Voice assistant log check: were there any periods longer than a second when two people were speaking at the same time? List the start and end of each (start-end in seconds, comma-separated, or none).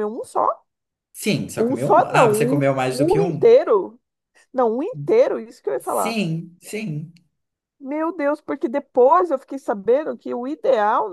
1.6-3.5